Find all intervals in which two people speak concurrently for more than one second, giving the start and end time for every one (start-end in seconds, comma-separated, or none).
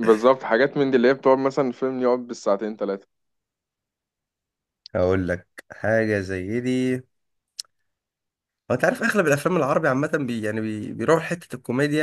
none